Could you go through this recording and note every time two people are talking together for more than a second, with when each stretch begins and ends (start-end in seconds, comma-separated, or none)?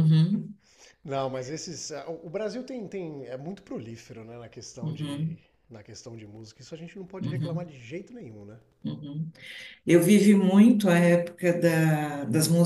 none